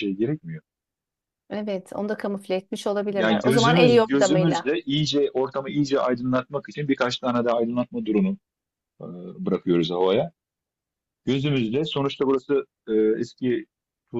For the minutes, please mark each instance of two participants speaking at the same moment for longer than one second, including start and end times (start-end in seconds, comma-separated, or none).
3.1-4.7